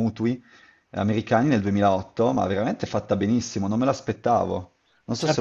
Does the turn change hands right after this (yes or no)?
yes